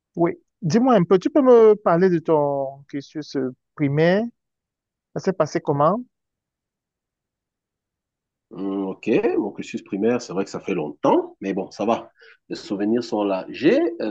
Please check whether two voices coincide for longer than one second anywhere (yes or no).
no